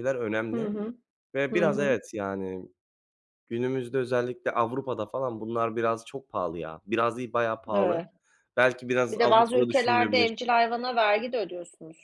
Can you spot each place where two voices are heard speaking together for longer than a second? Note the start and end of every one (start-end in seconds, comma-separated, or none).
9.1-10.3